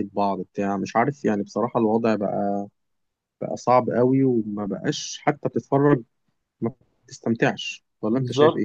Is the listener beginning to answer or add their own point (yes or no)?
yes